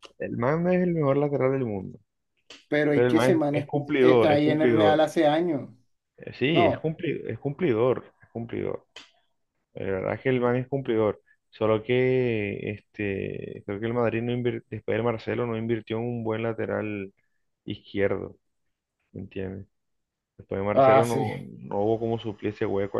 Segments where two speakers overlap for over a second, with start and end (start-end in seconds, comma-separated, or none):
2.9-5.1